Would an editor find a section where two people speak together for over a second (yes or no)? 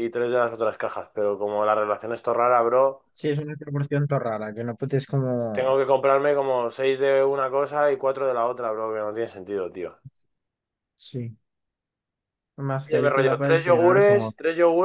yes